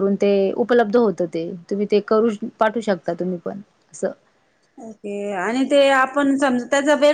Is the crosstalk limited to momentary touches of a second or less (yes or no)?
yes